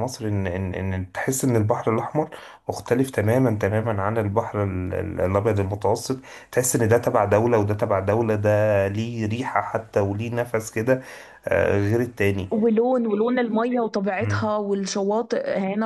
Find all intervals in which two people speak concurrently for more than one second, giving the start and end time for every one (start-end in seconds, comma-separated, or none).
none